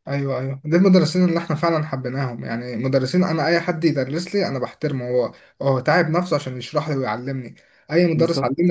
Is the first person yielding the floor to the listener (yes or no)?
no